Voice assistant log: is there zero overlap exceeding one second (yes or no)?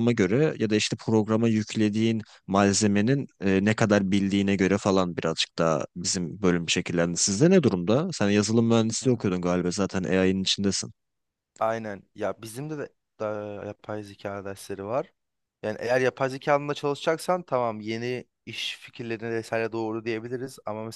yes